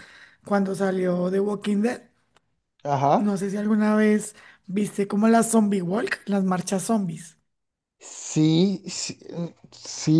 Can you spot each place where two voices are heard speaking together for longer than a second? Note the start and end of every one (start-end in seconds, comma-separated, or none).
none